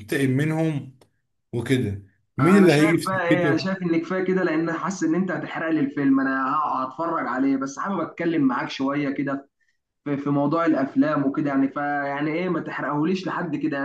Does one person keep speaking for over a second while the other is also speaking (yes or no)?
yes